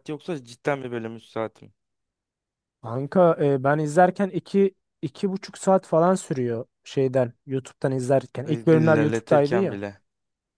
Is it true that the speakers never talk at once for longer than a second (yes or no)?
no